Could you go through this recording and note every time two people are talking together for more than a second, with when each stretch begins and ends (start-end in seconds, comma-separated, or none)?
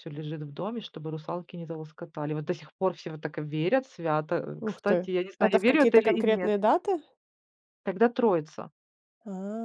4.6-6.5